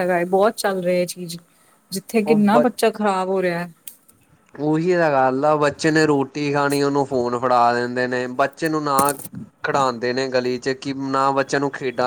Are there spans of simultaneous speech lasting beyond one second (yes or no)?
no